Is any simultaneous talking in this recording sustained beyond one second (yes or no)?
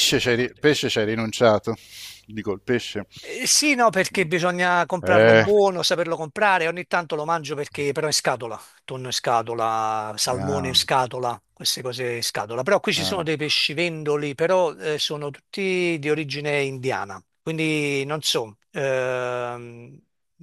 no